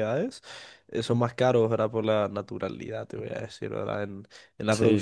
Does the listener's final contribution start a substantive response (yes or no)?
no